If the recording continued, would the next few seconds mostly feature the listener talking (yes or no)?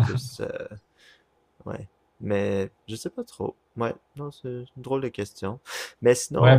yes